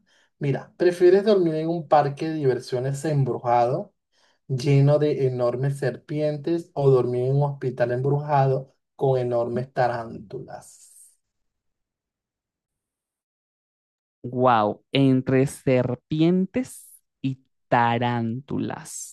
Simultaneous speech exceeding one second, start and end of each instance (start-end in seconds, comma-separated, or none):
none